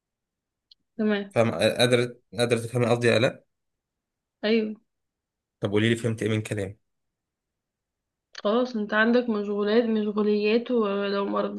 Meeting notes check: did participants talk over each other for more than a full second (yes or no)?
no